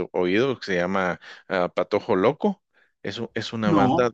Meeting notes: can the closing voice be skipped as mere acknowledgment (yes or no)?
yes